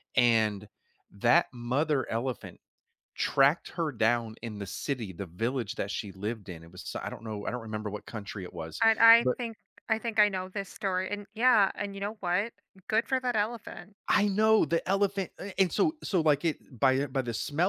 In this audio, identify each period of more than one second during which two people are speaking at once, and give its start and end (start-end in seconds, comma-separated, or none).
none